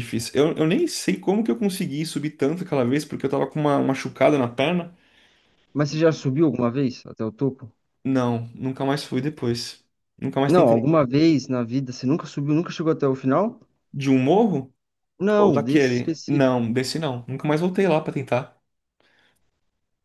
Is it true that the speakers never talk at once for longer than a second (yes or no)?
no